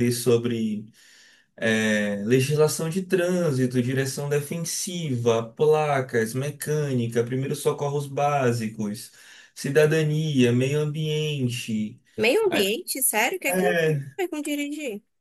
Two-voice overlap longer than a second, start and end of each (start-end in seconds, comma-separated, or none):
none